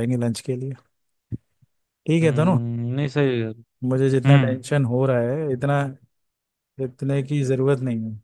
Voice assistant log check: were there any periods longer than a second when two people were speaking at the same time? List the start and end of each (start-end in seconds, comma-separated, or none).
none